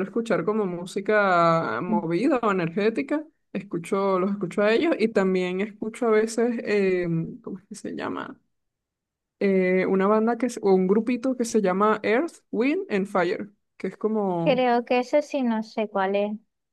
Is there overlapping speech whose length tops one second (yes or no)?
no